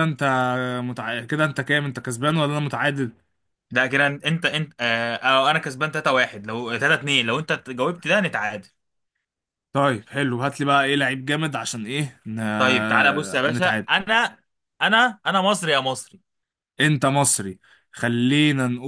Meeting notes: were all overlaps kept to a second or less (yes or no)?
yes